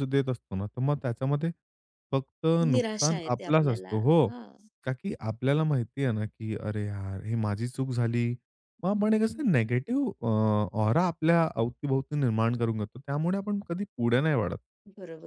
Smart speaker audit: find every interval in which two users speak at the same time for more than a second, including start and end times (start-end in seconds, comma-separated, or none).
2.7-4.3